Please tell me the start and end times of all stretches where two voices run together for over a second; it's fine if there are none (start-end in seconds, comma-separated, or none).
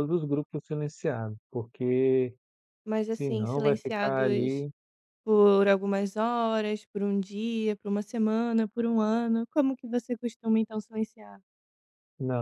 3.1-4.7